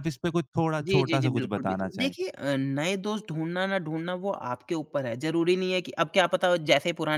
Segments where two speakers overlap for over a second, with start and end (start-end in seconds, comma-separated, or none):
0.9-2.1